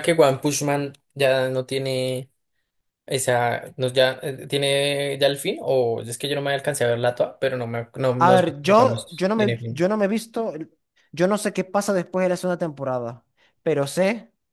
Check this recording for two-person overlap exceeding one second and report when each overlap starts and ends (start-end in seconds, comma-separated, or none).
8.2-9.9